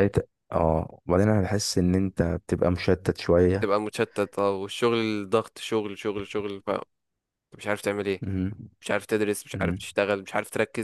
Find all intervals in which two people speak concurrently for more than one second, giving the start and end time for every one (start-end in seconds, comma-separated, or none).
none